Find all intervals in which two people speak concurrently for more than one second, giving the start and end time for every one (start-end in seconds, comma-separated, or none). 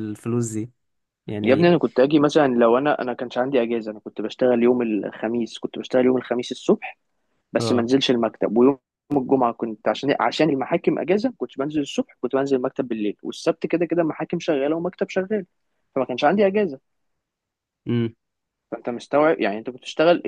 none